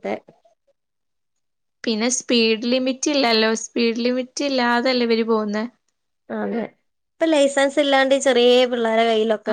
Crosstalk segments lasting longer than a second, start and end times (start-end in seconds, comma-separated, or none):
none